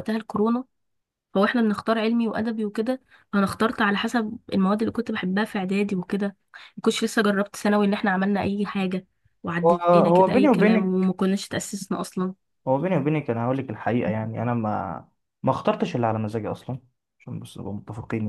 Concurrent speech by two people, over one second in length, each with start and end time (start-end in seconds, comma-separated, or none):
9.6-11.1